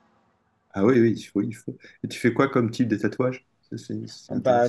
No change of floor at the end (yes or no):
no